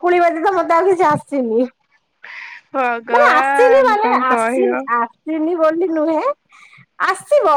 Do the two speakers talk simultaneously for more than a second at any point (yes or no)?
yes